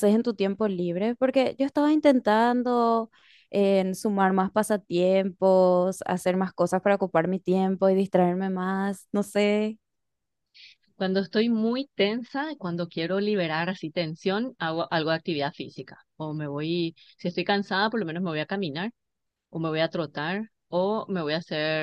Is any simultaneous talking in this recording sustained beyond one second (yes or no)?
no